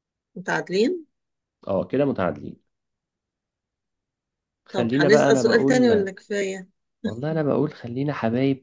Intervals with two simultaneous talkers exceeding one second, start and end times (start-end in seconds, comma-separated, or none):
4.7-6.1